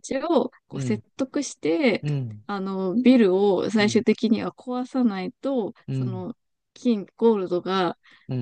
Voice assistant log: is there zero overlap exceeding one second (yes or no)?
yes